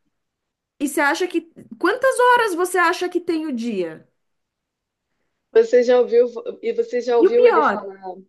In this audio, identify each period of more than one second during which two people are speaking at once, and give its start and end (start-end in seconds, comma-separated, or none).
none